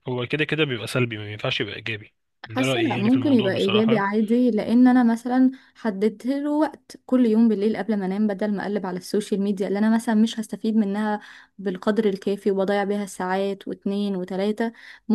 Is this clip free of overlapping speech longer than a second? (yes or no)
no